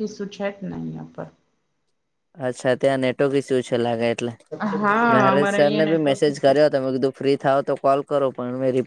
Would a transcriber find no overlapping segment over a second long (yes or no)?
no